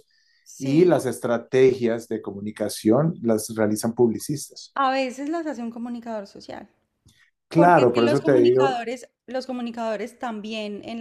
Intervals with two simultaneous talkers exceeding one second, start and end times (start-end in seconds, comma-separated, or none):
7.5-8.8